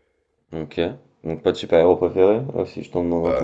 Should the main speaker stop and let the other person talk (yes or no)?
yes